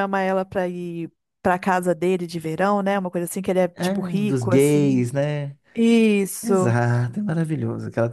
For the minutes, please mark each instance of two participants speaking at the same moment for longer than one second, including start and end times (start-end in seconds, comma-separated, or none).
3.7-5.1